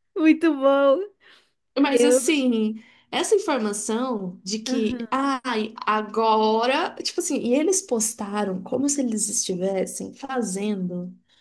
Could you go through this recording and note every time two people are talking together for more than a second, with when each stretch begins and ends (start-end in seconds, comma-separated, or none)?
none